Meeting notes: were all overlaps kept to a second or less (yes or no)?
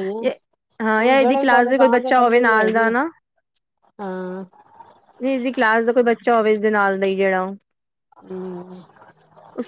no